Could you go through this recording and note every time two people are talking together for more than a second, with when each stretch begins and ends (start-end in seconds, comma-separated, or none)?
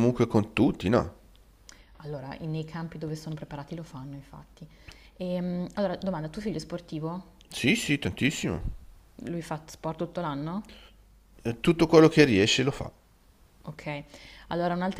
none